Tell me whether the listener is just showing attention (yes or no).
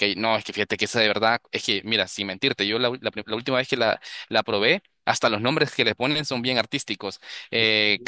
yes